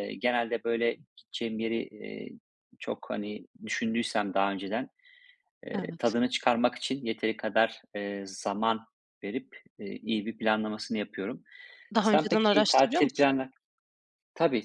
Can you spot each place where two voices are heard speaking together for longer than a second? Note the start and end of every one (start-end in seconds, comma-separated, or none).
12.0-13.3